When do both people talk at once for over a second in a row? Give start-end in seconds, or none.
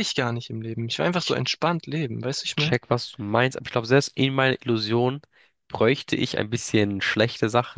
none